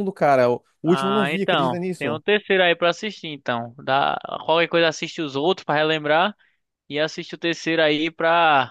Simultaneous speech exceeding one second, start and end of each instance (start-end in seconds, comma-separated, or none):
0.8-2.2